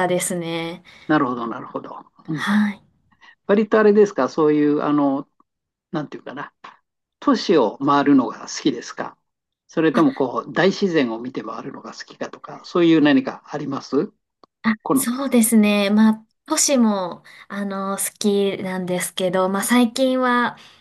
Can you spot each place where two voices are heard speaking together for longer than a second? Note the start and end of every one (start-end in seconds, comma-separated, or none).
none